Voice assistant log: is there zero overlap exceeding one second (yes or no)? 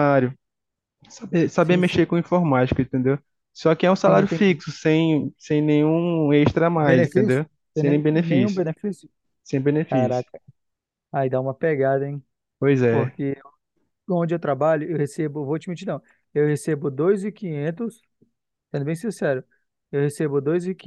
no